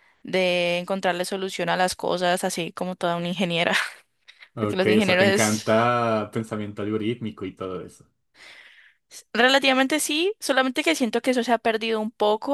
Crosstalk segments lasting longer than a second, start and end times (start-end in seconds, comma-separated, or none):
4.6-5.9